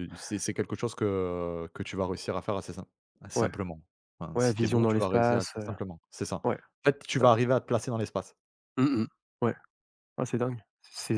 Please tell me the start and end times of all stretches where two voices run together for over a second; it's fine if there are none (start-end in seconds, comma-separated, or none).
4.3-5.7